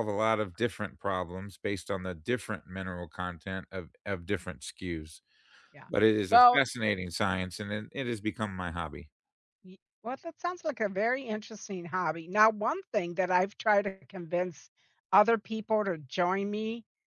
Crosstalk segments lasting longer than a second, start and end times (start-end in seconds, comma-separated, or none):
none